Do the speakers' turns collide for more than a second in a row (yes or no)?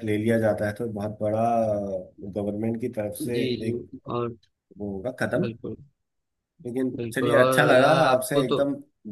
yes